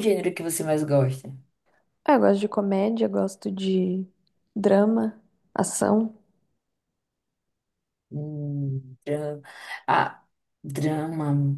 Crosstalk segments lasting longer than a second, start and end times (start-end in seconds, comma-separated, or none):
none